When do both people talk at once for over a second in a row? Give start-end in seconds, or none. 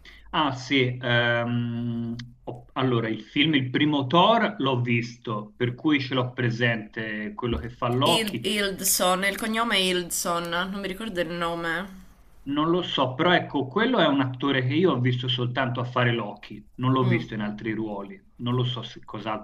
none